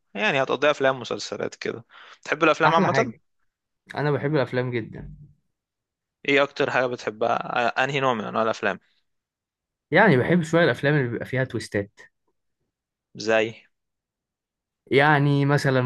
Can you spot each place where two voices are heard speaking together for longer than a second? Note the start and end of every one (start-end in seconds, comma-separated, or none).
none